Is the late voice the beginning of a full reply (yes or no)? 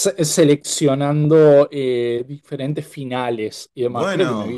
no